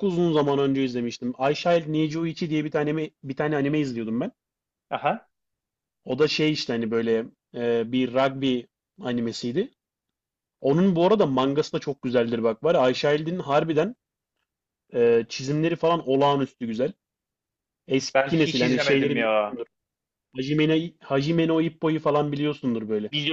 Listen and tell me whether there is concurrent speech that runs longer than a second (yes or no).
yes